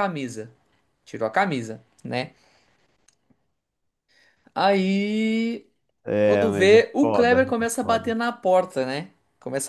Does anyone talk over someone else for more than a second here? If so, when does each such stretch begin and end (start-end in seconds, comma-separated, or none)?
6.2-8.2